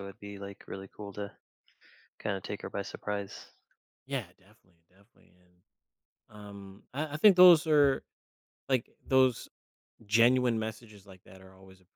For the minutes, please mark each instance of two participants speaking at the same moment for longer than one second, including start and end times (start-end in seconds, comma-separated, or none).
none